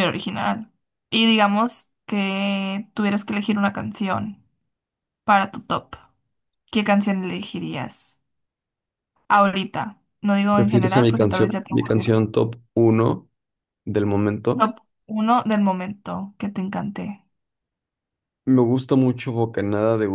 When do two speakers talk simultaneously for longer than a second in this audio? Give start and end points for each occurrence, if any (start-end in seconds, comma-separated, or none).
10.5-12.2